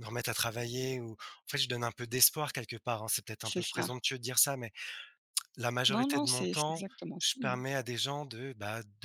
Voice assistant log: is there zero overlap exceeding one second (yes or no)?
no